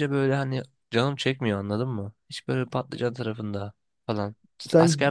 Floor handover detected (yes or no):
no